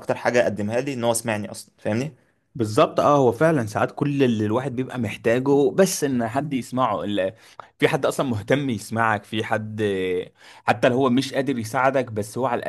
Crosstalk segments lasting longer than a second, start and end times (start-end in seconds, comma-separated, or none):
none